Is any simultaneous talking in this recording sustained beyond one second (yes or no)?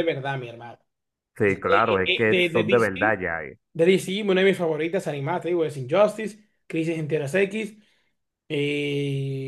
yes